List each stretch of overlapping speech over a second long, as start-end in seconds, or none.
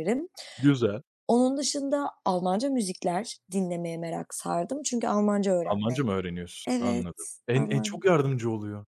6.7-8.1